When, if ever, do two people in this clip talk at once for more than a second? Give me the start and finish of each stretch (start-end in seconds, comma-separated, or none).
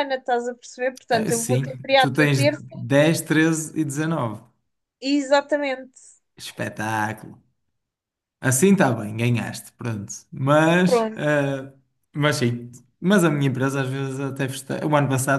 1.1-2.6